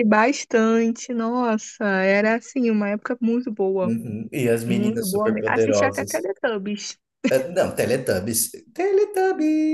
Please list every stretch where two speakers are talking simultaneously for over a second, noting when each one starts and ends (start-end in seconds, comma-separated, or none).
4.7-6.3